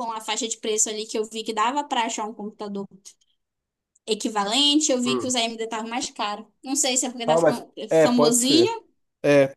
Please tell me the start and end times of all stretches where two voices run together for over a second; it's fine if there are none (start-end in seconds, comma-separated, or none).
7.2-8.7